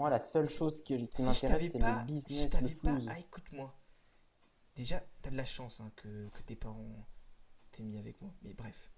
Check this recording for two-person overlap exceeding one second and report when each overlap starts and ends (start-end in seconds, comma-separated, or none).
1.1-3.1